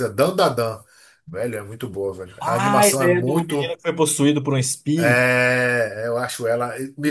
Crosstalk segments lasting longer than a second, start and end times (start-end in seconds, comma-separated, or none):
2.4-3.8